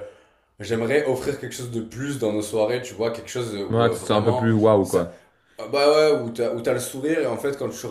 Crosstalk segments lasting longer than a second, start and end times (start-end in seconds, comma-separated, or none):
3.7-5.1